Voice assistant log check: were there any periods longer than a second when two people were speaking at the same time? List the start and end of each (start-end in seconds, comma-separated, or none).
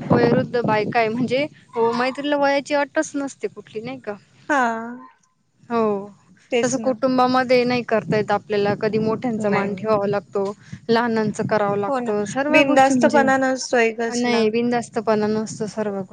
none